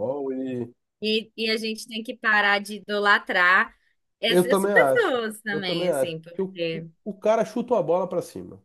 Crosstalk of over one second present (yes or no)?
yes